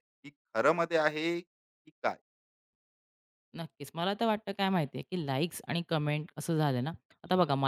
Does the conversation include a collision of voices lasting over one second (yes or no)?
no